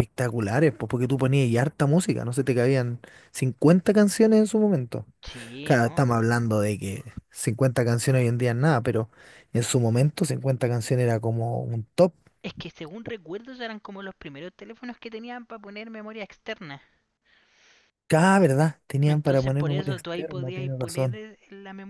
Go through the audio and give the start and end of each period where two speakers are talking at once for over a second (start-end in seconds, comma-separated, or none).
19.0-21.2